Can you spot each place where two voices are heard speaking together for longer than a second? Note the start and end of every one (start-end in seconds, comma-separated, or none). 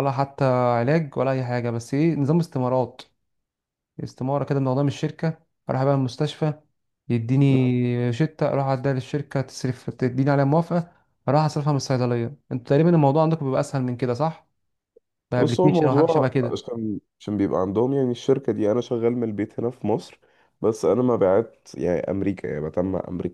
15.4-16.6